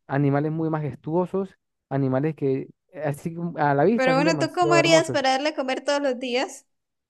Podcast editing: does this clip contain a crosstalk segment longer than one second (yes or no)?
yes